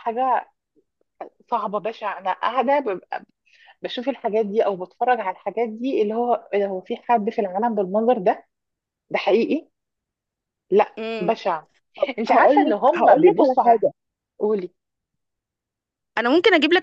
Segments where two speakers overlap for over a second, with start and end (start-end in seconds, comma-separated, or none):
12.3-13.8